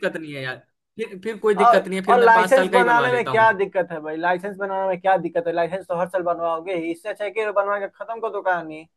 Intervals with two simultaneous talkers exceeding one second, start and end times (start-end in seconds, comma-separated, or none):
1.6-3.5